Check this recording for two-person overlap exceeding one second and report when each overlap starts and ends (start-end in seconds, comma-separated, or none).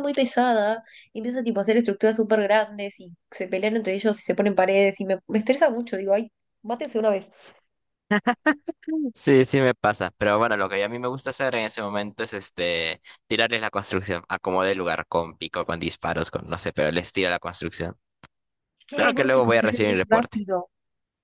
18.9-20.4